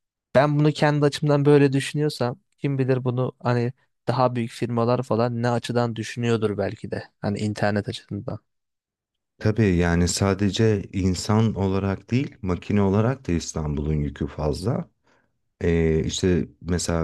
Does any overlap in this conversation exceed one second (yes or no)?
no